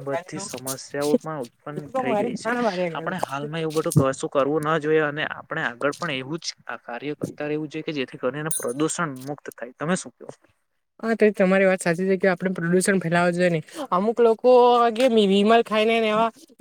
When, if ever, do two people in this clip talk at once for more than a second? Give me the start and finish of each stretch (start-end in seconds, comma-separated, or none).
none